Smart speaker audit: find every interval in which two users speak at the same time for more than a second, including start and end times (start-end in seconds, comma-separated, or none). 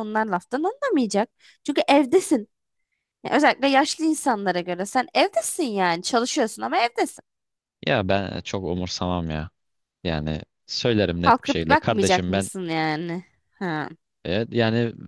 11.2-12.5